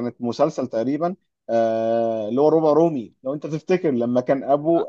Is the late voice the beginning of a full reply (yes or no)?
no